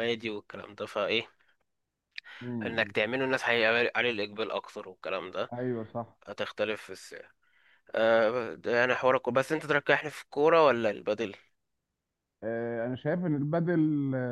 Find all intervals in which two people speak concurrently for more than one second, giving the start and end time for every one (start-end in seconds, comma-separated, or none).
none